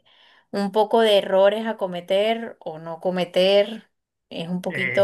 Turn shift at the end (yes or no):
yes